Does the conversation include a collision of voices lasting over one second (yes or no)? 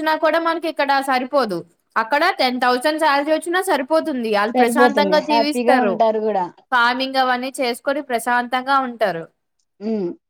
yes